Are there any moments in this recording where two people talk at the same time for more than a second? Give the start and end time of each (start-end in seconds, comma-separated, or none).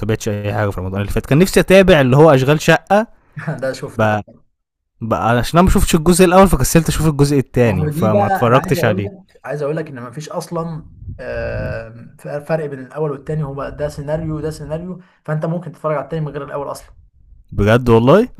7.6-9.1